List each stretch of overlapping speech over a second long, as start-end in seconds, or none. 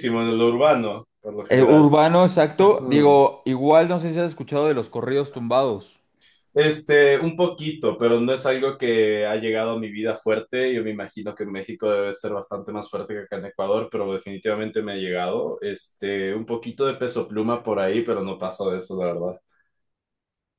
none